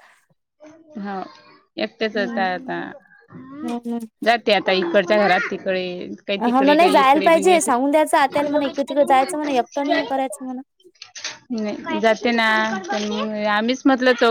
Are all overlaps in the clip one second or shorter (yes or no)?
no